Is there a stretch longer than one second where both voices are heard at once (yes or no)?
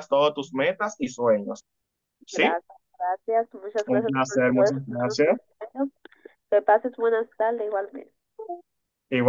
yes